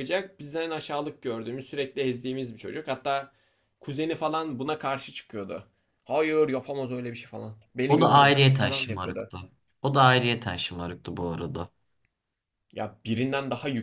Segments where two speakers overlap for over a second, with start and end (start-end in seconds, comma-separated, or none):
7.9-9.3